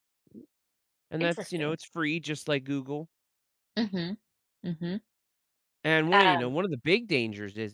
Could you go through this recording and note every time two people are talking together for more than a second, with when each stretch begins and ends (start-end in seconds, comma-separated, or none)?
none